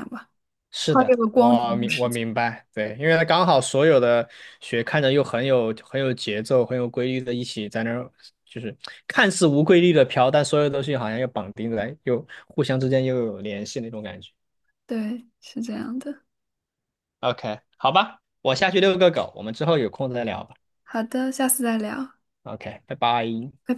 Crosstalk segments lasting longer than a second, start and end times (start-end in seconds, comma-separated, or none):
0.9-2.2